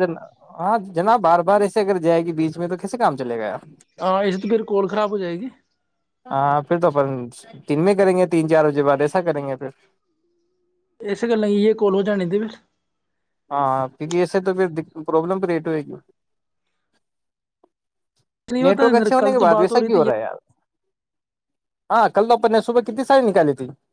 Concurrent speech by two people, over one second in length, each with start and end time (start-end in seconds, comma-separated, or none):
18.6-20.0